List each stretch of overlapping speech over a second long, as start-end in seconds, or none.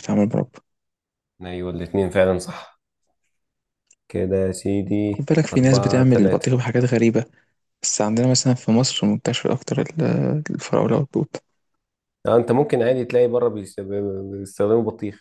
5.1-6.5